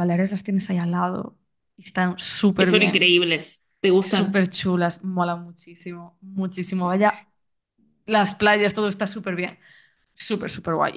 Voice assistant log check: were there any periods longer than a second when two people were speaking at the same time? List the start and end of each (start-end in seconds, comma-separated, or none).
none